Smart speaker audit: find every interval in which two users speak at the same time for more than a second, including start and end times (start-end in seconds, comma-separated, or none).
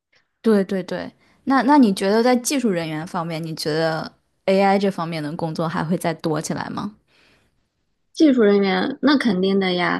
none